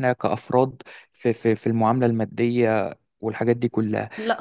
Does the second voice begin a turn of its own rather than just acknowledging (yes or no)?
yes